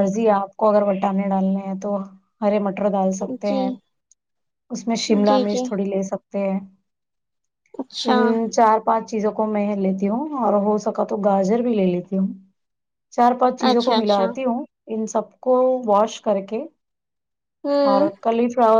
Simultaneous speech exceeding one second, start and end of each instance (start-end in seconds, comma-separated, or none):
none